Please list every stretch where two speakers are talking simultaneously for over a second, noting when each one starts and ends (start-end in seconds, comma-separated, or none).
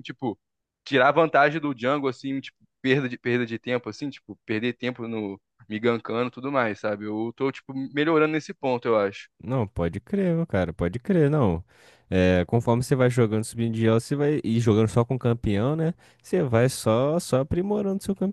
none